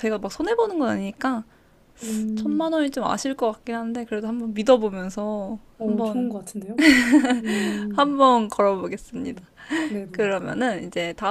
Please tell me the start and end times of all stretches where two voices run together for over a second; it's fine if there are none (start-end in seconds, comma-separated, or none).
none